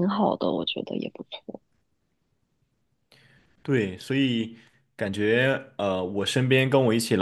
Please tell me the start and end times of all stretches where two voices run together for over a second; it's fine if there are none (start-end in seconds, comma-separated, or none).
none